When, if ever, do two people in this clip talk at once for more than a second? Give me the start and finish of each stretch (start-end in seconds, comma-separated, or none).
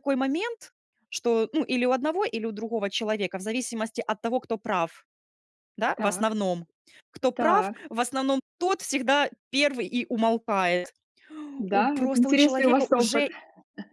11.7-13.3